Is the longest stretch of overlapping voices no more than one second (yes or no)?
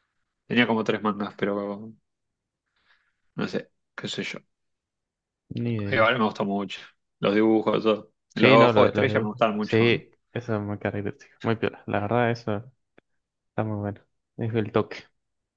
no